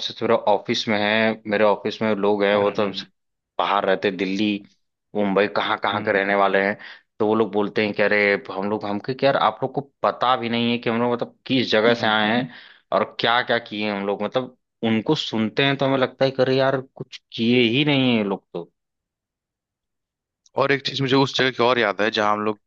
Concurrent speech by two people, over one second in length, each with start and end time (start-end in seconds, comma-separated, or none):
none